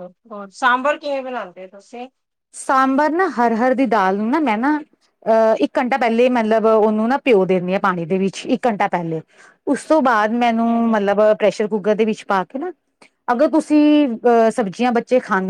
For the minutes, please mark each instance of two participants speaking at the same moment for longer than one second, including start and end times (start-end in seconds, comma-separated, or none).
none